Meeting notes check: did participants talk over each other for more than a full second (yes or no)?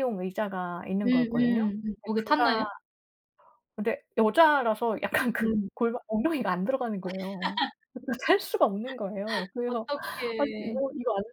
yes